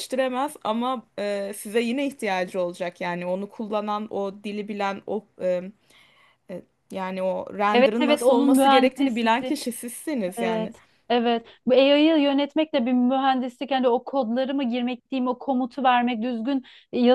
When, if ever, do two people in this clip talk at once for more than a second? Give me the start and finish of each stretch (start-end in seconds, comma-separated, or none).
7.7-9.6